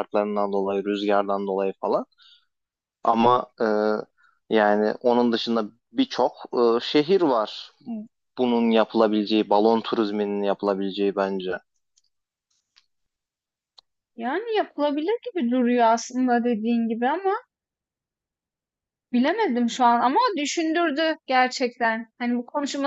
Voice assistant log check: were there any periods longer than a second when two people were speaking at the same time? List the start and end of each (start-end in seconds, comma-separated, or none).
none